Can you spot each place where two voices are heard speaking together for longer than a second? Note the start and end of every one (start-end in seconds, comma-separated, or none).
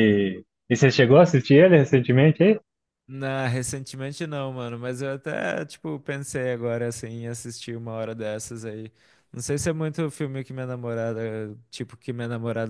none